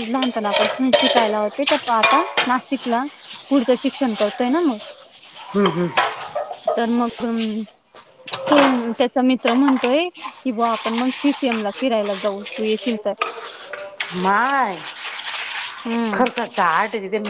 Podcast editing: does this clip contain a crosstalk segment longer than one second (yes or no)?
no